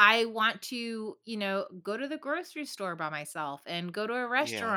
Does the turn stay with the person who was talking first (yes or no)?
yes